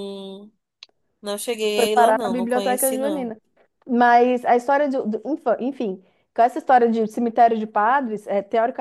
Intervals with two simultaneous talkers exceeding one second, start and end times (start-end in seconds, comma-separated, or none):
1.7-3.3